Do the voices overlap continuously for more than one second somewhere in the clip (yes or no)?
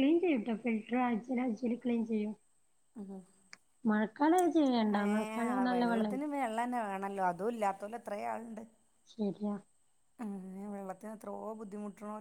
no